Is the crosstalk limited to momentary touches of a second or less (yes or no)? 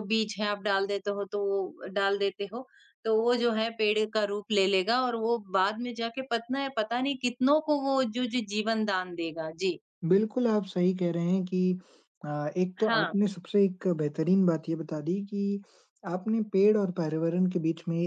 yes